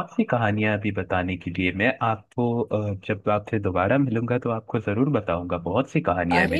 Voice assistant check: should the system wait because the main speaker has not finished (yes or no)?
no